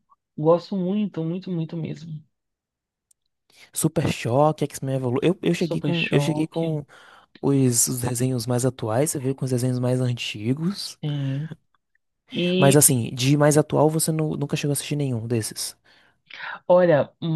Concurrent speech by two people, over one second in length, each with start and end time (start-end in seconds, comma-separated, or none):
5.5-6.8